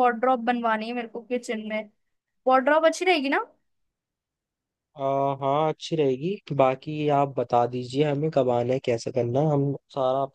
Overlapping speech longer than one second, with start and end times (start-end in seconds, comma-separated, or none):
none